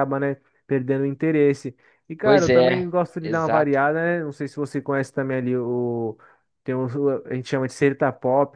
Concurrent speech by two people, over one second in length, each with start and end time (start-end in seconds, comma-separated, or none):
2.2-3.8